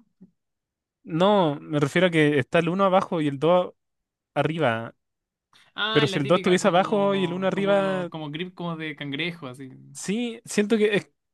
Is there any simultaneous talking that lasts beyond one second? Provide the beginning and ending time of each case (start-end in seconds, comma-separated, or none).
5.9-8.1